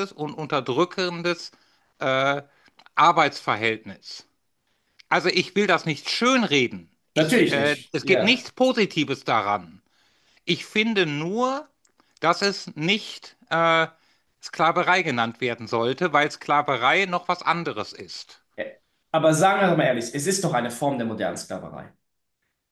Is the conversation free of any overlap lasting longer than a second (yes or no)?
no